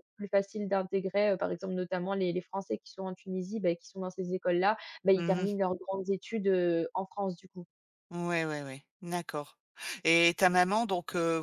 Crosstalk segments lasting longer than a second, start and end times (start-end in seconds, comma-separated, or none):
none